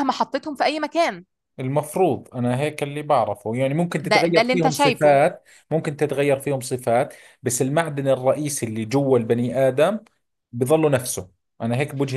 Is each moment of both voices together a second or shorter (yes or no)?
no